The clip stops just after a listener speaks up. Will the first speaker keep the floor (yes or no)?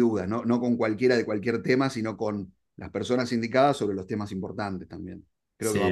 no